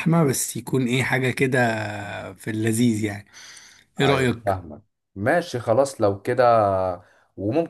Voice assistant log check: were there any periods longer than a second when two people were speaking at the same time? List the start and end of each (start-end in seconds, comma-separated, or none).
none